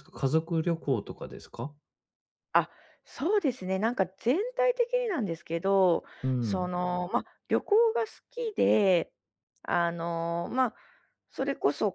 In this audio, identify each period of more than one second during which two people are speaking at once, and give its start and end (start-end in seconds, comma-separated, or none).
none